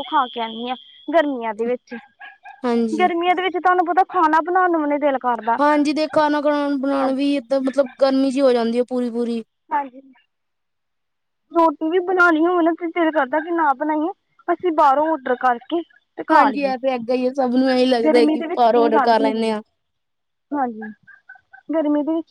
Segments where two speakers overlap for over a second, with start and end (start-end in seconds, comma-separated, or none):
18.1-19.6